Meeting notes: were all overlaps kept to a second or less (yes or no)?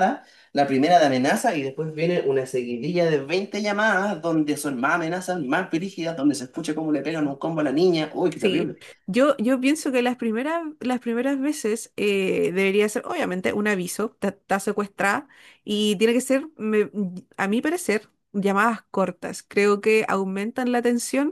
yes